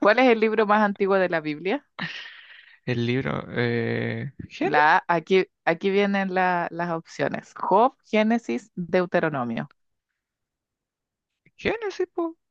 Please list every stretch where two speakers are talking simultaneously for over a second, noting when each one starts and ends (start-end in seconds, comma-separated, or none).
none